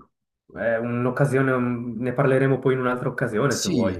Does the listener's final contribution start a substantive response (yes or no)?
yes